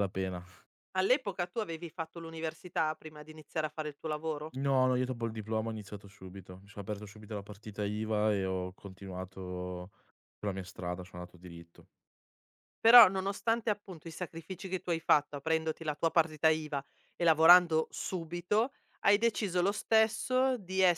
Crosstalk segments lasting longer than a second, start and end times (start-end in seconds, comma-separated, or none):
none